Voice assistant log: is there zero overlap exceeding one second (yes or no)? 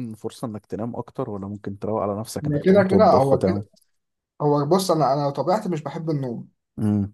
no